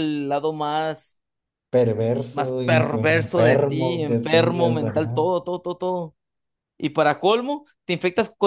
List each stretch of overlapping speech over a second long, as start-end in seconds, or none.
2.3-5.2